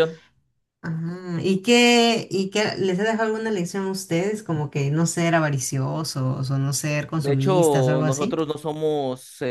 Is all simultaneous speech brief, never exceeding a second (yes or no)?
no